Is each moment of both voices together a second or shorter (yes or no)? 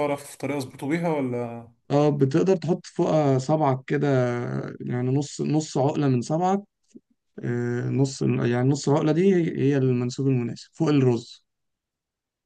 yes